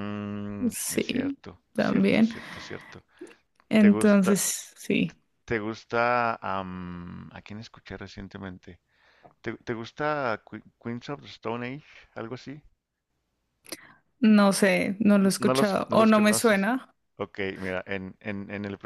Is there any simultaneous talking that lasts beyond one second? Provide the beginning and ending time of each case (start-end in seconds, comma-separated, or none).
0.7-2.3, 15.2-16.7